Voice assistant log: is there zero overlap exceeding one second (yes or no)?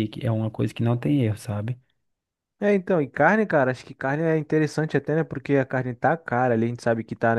yes